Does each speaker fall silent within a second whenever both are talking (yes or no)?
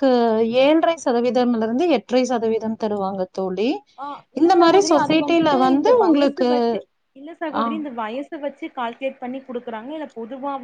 no